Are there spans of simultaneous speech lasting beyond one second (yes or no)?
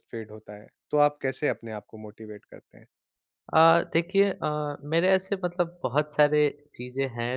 no